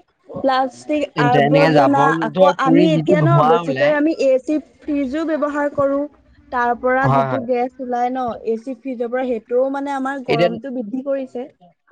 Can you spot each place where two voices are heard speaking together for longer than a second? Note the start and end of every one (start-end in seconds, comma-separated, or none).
1.2-3.9